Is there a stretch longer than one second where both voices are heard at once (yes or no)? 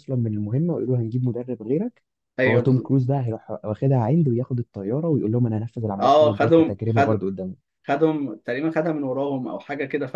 yes